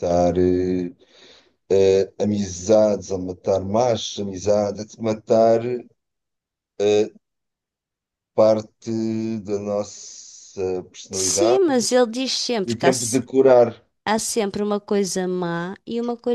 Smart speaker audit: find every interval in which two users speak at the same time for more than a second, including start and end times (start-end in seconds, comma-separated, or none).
none